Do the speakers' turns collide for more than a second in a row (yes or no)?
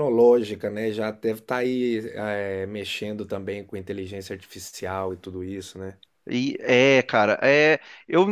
no